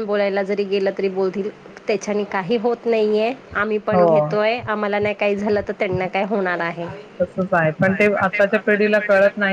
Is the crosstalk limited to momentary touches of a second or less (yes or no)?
yes